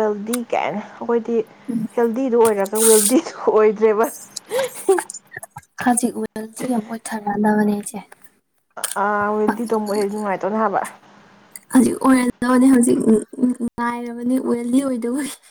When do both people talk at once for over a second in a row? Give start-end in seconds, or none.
none